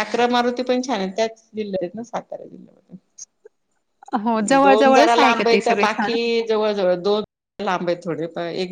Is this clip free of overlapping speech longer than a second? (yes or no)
no